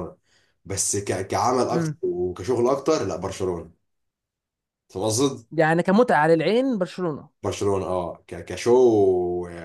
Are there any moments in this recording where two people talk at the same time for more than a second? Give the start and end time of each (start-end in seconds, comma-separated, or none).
none